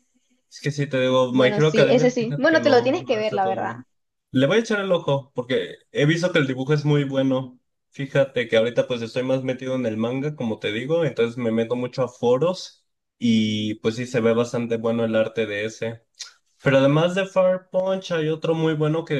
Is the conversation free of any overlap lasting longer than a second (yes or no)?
no